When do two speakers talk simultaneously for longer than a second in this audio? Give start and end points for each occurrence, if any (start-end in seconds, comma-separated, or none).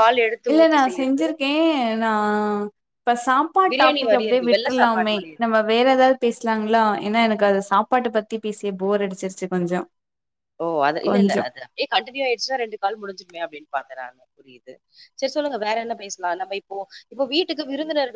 3.7-5.4